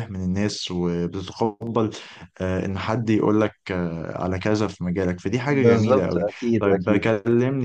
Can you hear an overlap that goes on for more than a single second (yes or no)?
yes